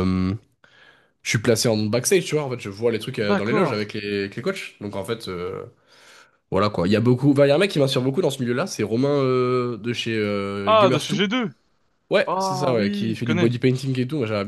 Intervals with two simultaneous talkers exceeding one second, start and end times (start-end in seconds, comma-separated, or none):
12.3-13.5